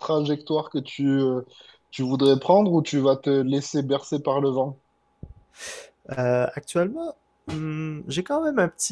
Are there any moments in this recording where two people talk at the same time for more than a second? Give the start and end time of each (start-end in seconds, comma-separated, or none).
none